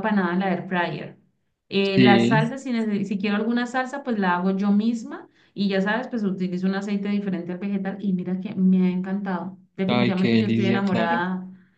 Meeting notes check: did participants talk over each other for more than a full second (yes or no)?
yes